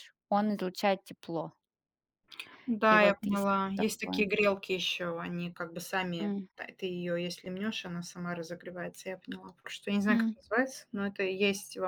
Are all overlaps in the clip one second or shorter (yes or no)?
no